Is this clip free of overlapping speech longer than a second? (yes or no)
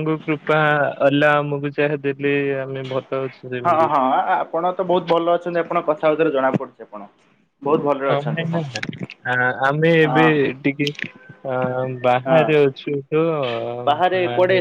yes